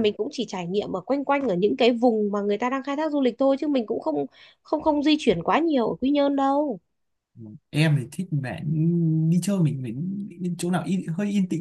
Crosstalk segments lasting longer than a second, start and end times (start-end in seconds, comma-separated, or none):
none